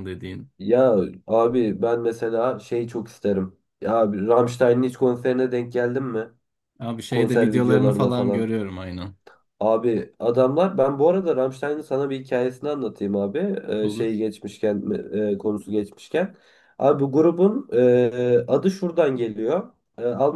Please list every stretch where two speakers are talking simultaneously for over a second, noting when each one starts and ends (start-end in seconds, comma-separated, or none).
7.1-8.5